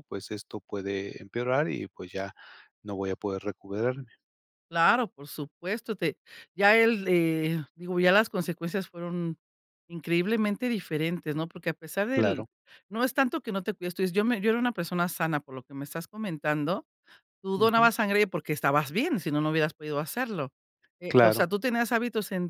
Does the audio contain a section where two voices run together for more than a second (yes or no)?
no